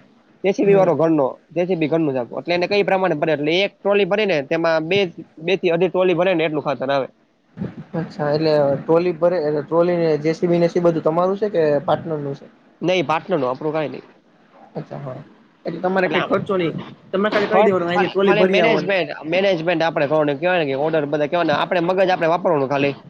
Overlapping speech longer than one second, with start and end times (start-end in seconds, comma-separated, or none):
17.5-18.9